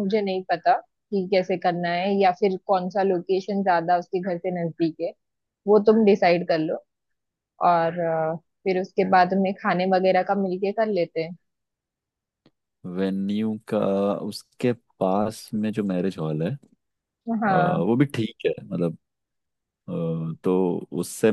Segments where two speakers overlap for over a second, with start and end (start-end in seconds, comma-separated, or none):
none